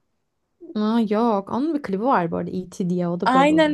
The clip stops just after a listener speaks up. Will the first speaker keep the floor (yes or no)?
no